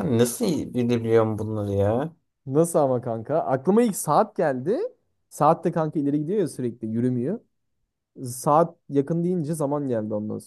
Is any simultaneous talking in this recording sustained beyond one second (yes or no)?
no